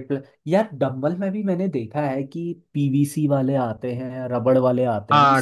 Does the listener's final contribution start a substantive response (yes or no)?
yes